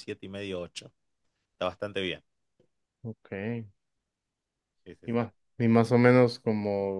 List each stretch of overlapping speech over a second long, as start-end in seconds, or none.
none